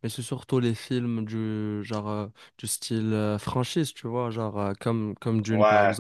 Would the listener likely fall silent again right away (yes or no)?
yes